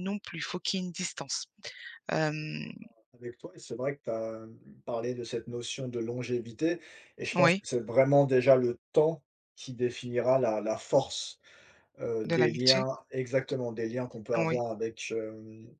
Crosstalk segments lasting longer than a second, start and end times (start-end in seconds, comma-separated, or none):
none